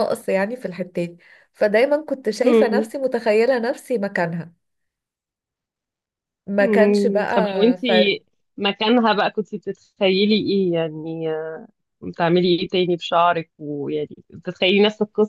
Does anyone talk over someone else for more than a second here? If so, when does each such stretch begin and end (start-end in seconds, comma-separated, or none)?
6.6-8.2